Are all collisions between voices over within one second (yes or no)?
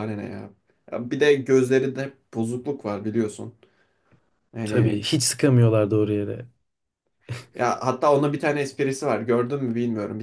yes